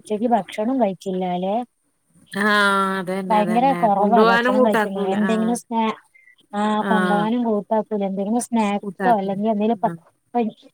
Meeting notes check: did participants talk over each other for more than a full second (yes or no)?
yes